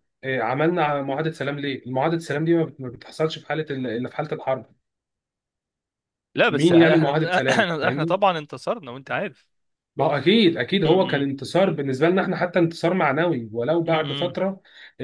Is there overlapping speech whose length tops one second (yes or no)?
yes